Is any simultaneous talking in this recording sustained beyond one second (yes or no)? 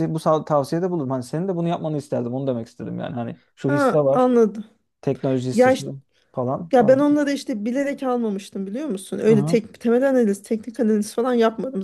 no